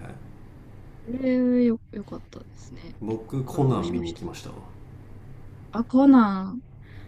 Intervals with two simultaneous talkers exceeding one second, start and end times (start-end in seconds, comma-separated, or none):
3.0-4.2